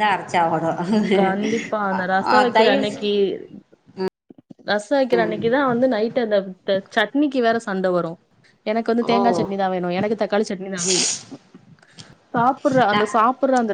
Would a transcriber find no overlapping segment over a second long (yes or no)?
yes